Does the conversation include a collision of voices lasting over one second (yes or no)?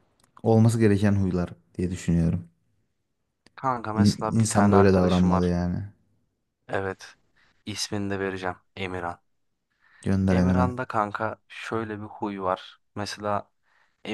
yes